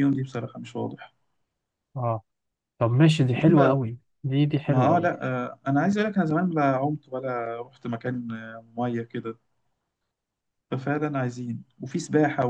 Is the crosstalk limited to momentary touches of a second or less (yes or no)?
yes